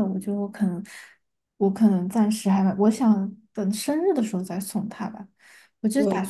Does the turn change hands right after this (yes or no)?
no